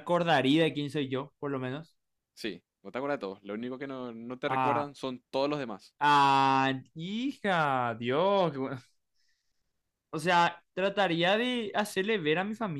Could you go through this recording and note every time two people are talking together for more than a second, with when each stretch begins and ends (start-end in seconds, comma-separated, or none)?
none